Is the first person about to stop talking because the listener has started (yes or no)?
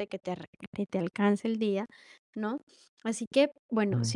no